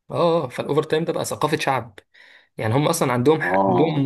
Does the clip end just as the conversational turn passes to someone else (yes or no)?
no